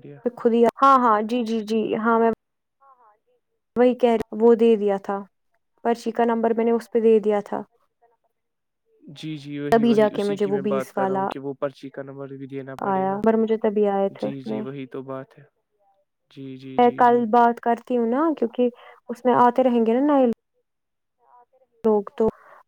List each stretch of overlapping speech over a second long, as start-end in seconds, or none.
9.7-11.3